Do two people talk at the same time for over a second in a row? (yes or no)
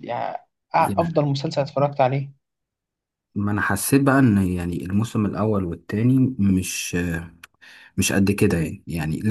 no